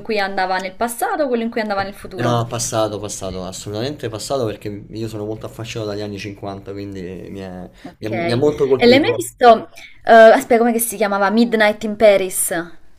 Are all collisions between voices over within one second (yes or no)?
no